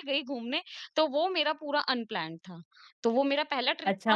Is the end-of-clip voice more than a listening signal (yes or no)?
yes